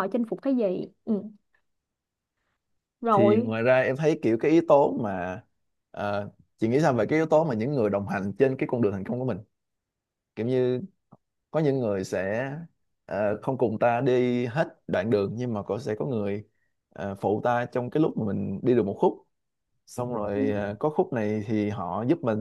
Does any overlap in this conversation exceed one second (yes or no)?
no